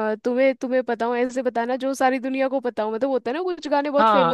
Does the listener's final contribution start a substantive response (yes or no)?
yes